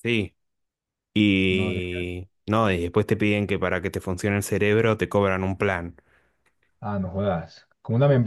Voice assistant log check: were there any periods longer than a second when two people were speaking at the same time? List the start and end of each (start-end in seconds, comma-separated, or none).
none